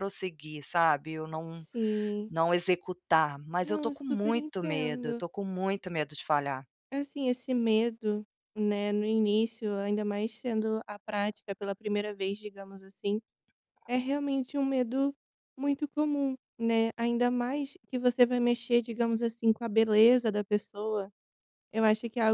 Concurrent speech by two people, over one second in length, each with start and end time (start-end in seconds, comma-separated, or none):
3.6-5.2